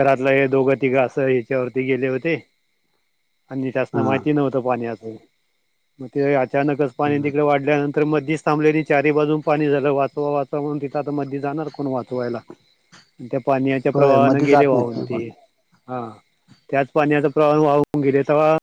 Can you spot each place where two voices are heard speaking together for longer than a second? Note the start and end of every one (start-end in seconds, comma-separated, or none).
13.9-15.2